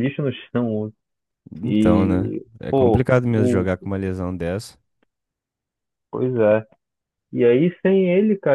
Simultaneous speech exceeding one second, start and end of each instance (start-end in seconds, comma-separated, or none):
1.6-3.6